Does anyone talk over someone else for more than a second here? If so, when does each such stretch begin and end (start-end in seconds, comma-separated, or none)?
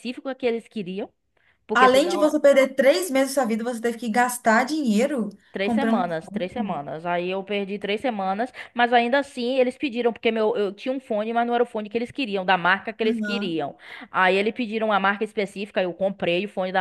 5.5-6.8